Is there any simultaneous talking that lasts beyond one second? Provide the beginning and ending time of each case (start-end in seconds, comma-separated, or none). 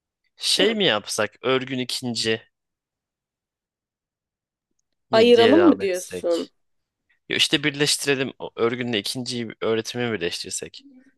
5.1-6.5